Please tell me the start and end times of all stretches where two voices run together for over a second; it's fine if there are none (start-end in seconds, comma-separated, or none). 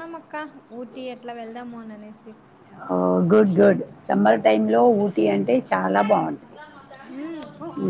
none